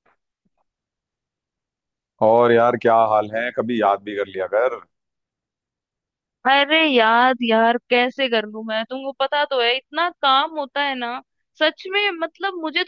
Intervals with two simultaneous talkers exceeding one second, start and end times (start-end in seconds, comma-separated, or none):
none